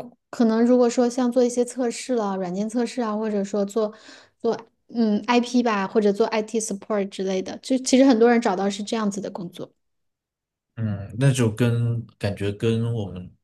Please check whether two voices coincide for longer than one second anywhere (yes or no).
no